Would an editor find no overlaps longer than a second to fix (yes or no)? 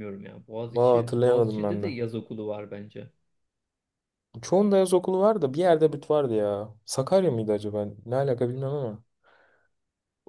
no